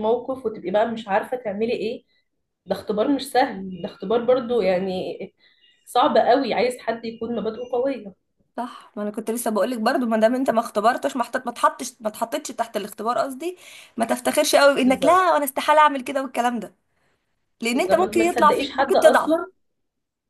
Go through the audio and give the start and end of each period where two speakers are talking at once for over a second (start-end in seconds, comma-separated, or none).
17.7-19.4